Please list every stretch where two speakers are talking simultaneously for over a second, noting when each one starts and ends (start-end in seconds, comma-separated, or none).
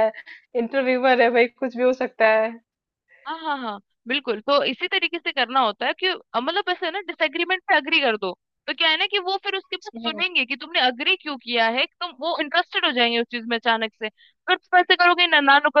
none